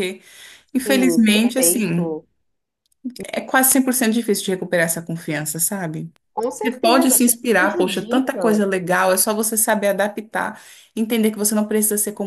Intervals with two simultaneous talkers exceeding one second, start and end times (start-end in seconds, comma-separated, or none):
0.8-2.2, 6.6-8.6